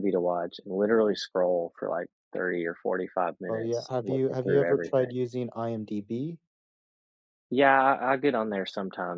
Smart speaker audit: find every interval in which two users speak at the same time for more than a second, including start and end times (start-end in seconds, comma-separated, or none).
3.5-5.1